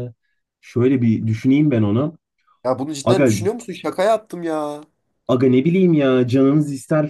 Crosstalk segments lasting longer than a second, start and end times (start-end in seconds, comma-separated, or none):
none